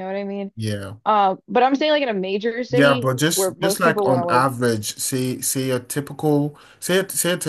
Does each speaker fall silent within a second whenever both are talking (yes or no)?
no